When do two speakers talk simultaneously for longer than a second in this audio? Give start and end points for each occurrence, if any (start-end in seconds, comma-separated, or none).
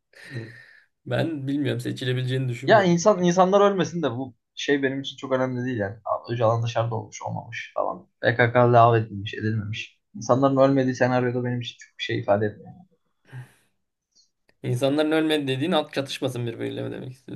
none